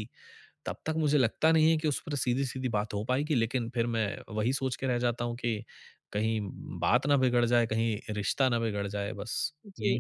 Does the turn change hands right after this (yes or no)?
yes